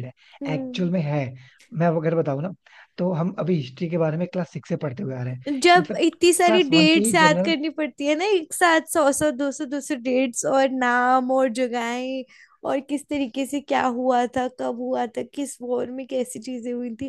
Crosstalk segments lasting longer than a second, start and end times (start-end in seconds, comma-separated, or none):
5.5-7.5